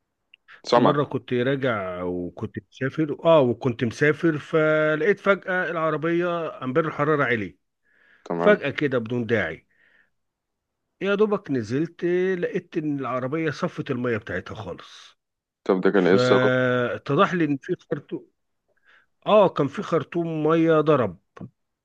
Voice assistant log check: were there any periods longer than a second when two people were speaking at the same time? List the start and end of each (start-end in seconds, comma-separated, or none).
none